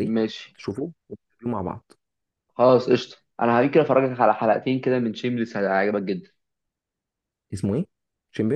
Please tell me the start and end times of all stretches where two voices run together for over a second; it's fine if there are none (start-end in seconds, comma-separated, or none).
none